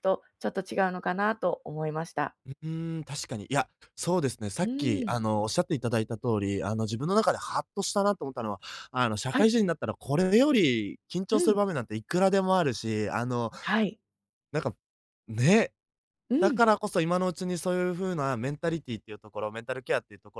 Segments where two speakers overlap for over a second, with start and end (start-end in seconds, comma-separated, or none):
none